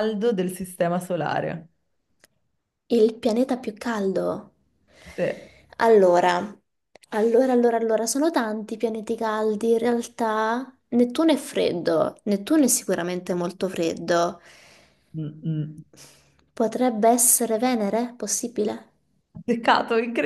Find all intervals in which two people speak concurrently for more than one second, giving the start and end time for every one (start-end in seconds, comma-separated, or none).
none